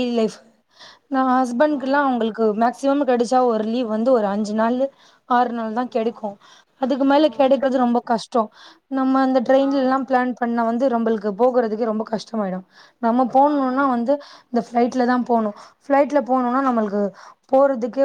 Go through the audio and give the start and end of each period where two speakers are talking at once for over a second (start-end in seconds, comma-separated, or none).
none